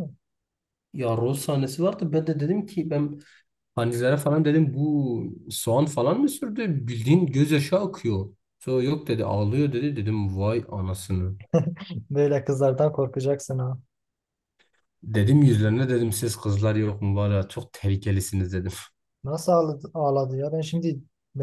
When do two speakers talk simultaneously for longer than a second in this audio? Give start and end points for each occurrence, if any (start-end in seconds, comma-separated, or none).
none